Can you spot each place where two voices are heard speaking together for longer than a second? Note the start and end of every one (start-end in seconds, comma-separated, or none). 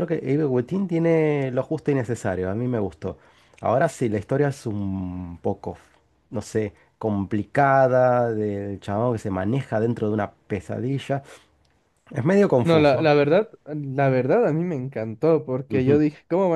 none